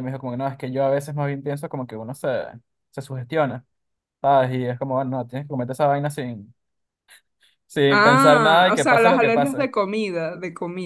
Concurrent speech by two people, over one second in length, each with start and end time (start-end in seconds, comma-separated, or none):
7.9-9.7